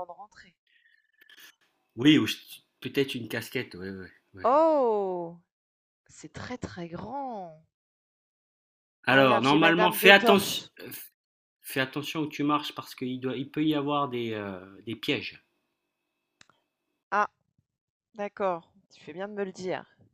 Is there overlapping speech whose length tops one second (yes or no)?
yes